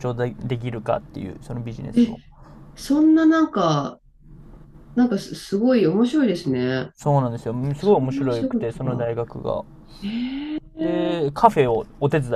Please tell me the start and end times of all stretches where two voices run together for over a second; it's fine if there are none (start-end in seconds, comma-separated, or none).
7.8-9.1